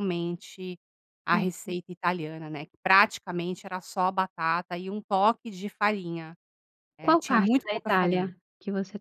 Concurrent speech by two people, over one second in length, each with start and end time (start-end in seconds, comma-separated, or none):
7.0-8.3